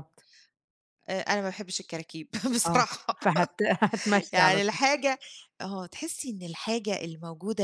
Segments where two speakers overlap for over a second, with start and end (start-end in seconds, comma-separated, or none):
none